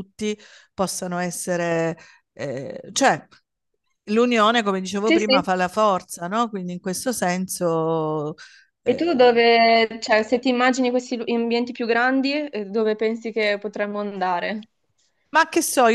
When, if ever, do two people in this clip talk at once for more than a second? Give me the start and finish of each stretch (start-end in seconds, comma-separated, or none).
none